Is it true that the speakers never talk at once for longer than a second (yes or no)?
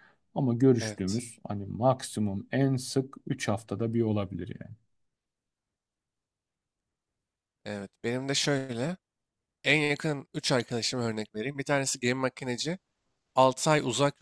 yes